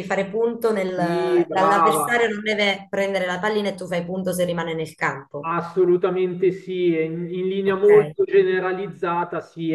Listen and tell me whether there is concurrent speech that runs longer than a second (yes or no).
yes